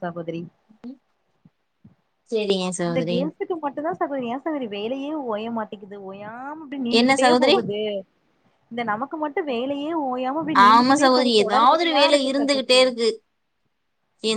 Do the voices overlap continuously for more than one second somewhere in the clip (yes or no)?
yes